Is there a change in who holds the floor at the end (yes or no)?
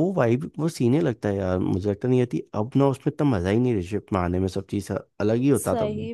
yes